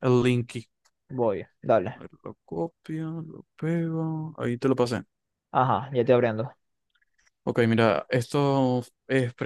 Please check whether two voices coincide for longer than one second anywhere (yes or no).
no